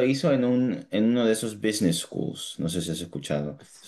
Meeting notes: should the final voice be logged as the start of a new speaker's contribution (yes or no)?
yes